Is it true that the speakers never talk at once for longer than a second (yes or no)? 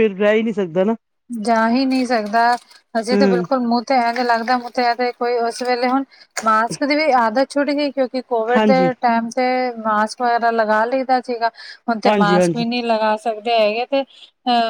yes